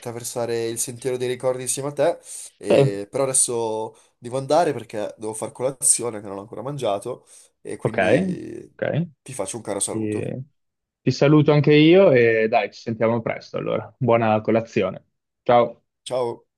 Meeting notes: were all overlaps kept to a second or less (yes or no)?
yes